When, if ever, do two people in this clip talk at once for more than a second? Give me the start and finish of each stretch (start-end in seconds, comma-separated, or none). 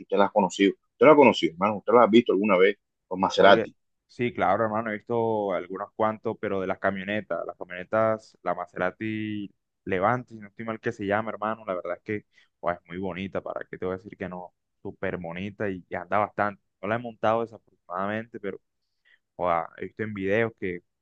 none